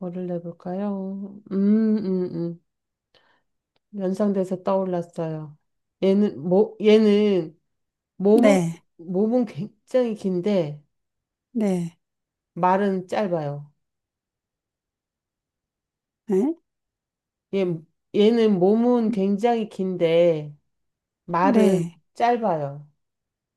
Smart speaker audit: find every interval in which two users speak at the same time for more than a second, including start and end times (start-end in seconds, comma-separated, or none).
none